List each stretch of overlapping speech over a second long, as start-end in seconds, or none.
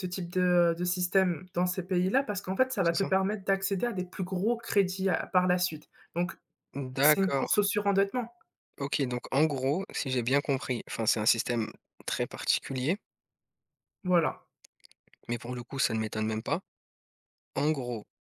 none